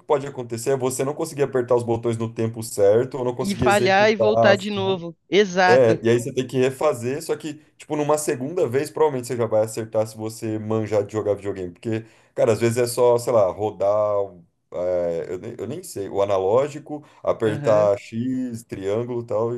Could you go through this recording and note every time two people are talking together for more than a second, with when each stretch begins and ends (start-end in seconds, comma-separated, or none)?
3.4-5.0